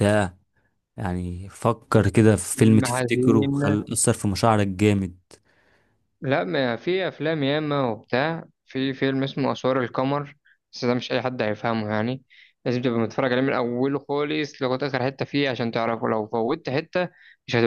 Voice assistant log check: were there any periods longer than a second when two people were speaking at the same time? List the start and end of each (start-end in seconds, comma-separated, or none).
2.5-3.8